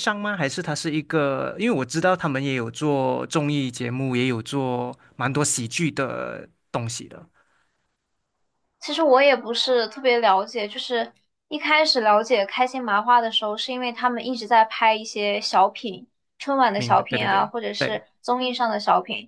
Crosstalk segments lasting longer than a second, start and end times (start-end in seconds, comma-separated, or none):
16.8-18.0